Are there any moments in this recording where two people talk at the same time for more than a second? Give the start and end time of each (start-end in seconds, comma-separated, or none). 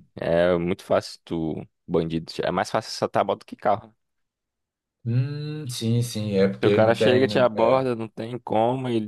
6.6-7.9